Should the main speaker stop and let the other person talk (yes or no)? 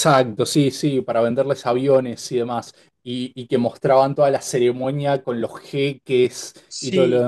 yes